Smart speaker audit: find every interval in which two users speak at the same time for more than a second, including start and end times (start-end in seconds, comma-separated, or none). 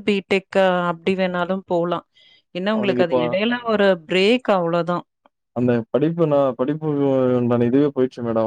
none